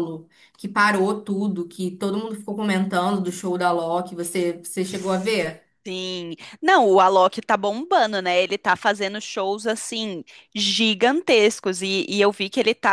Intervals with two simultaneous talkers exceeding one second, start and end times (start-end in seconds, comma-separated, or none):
none